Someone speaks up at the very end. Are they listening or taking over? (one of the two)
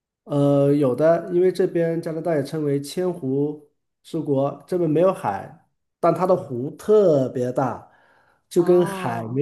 listening